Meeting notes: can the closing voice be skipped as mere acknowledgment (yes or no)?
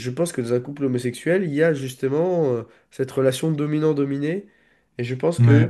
yes